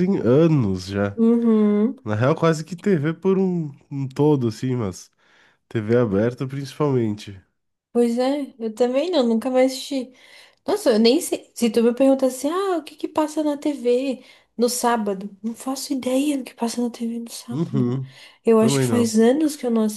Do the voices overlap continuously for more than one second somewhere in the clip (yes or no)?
no